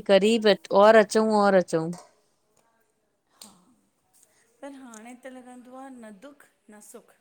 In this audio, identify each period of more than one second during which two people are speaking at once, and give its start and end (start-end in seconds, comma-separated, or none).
none